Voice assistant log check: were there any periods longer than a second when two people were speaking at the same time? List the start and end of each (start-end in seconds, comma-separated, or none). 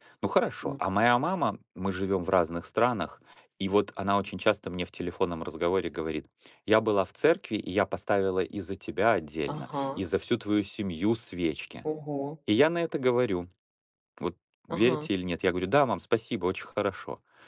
none